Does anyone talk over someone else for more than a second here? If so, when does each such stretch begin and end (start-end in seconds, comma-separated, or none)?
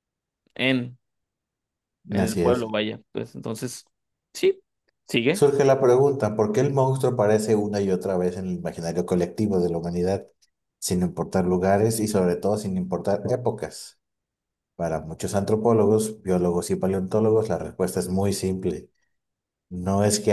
none